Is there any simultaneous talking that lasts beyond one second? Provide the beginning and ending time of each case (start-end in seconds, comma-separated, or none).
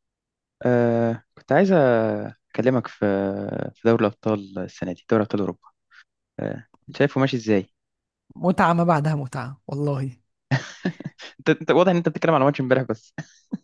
none